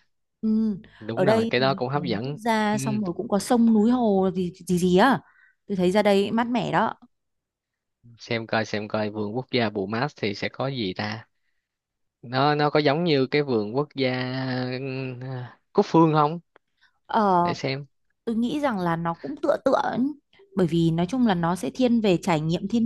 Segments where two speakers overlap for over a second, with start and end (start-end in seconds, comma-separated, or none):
1.1-2.8